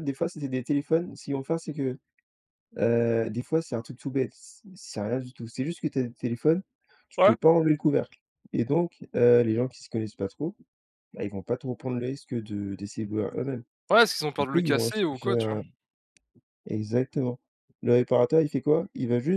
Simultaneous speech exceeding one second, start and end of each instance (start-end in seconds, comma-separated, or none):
14.4-15.6